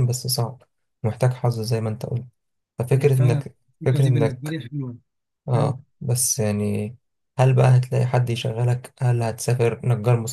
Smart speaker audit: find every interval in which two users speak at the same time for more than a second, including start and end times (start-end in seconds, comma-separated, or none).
3.0-4.6